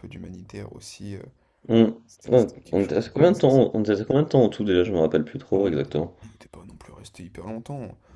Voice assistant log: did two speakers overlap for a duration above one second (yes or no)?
yes